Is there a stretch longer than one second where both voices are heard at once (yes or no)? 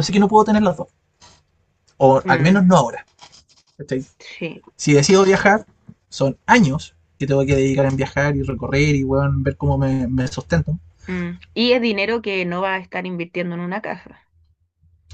no